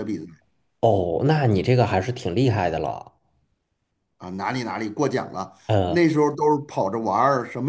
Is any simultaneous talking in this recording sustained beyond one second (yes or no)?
no